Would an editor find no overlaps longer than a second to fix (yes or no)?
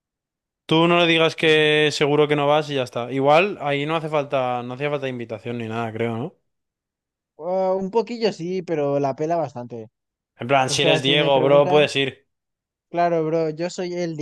no